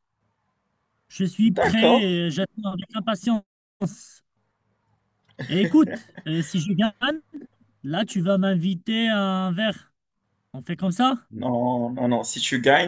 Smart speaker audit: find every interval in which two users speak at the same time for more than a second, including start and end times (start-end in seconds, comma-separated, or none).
none